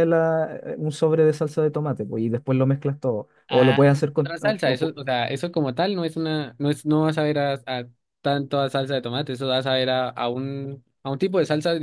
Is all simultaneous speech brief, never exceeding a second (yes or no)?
no